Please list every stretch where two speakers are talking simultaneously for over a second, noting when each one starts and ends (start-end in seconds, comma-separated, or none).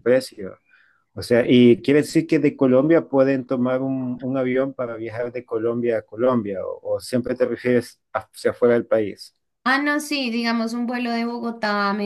none